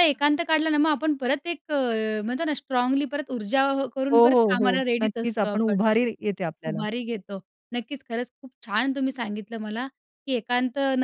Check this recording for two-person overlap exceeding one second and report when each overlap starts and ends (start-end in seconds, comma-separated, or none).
4.1-5.8